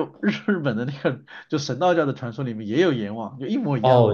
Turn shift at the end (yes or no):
yes